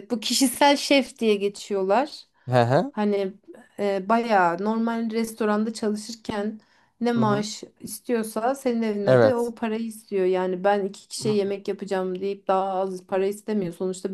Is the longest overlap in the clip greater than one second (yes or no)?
no